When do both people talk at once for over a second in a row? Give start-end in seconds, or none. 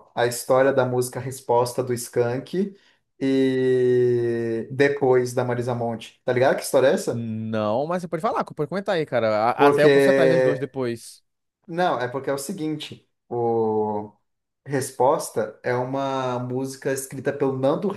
none